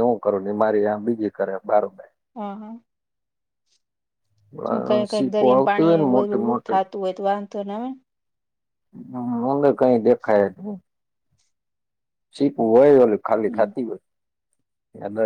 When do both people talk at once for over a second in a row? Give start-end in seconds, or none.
5.1-6.8